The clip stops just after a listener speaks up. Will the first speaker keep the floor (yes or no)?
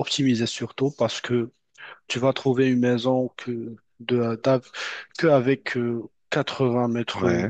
yes